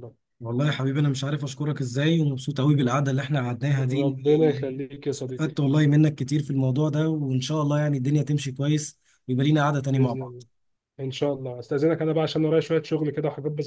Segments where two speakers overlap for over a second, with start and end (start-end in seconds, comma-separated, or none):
3.8-5.5